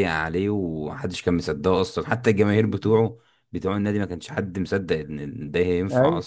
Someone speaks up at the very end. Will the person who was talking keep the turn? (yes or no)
no